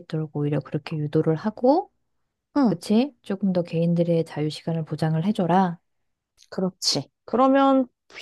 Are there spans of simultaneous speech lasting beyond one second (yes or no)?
no